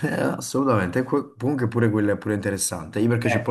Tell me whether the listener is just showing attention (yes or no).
yes